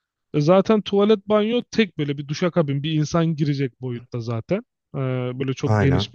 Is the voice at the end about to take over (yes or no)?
no